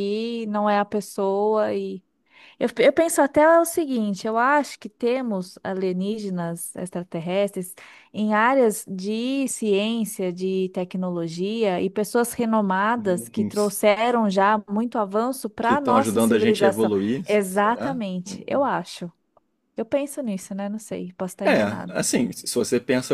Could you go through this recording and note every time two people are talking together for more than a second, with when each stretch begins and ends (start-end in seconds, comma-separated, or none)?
15.6-18.0